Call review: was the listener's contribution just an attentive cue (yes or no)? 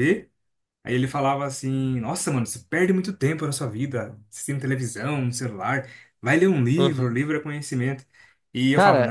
no